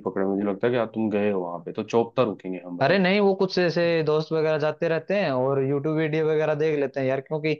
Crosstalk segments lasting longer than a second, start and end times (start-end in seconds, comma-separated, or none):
none